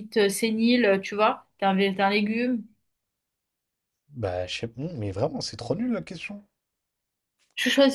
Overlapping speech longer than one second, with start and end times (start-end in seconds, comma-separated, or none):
none